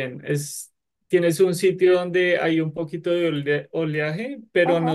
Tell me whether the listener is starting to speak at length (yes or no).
no